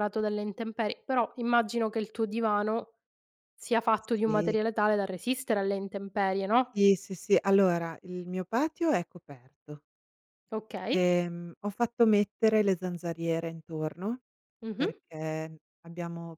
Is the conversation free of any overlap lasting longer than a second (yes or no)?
yes